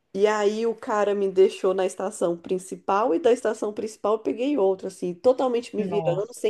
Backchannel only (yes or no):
yes